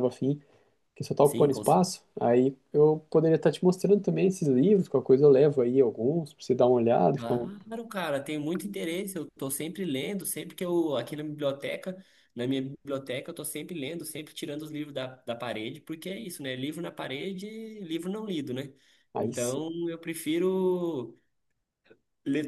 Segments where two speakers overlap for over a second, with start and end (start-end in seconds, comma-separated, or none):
none